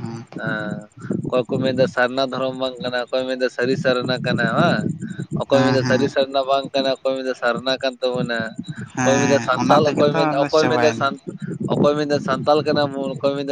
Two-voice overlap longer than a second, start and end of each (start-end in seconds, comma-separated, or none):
9.0-11.1